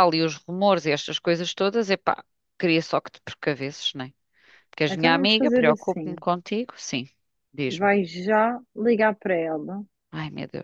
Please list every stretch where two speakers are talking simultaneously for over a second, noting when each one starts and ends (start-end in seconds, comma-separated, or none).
4.9-6.2